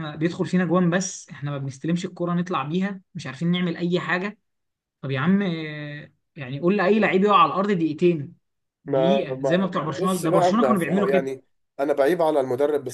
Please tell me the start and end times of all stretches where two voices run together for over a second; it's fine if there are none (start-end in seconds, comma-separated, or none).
8.9-11.3